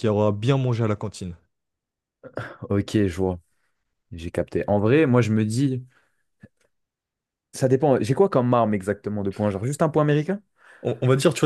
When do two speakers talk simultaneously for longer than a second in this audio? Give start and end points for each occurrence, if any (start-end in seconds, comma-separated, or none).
none